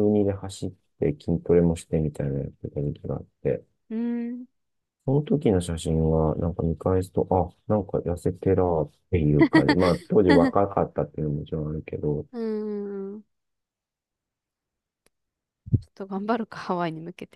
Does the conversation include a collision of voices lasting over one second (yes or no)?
no